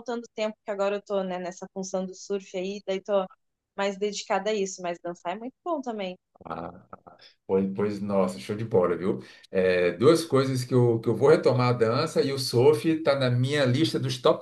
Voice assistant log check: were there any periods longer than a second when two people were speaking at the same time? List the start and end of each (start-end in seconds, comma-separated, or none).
none